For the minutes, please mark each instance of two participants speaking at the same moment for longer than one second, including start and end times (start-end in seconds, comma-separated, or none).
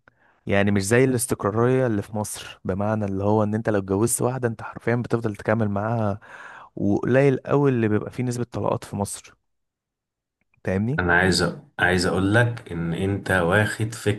none